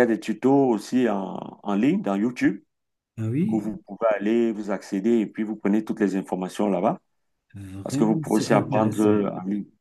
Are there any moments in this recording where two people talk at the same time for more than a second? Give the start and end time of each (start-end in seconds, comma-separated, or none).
7.8-9.3